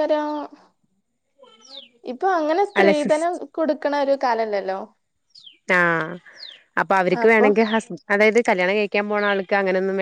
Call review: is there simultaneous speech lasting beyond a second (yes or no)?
no